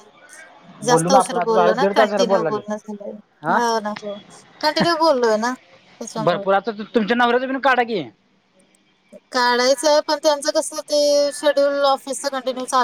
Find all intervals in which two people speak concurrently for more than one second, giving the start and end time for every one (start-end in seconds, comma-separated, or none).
0.9-2.5